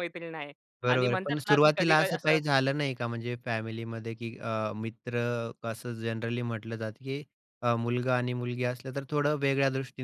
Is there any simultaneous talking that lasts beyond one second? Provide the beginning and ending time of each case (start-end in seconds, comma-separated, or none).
0.9-2.4